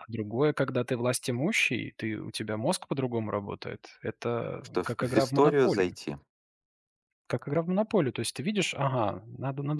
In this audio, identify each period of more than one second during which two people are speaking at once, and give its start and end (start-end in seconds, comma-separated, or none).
4.6-5.9